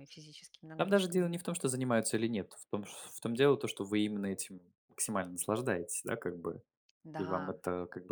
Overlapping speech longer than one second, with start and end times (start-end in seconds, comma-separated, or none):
none